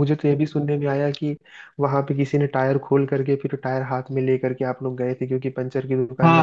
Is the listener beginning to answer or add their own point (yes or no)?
yes